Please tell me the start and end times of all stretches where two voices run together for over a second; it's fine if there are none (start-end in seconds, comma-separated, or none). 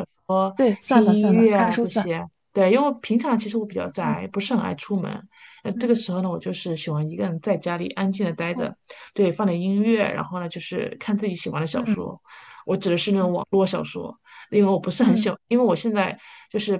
0.6-2.1